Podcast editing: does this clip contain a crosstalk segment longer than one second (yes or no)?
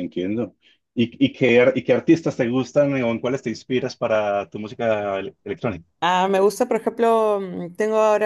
no